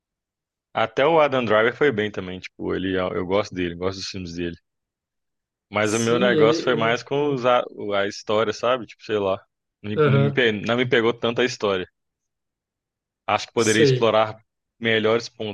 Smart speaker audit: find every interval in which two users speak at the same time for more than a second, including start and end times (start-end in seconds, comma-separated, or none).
5.8-7.4